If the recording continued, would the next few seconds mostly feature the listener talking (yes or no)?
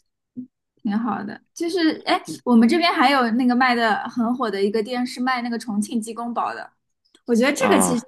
no